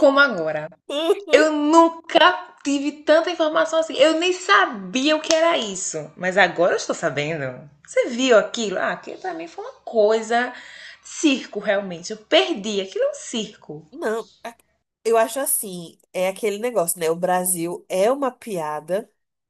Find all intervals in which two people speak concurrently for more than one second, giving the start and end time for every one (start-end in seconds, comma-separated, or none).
none